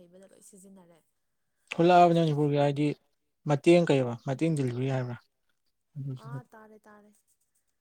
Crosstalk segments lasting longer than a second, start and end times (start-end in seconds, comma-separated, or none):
none